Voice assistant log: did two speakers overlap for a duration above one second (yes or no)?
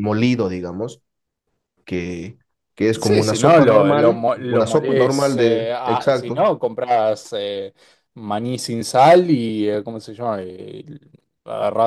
yes